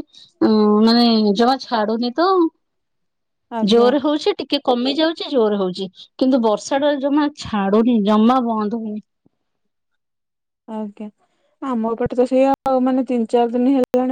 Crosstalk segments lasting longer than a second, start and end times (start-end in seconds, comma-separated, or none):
none